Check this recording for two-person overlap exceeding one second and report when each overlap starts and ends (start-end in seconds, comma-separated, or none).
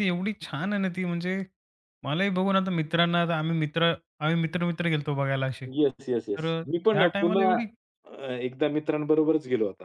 5.8-7.5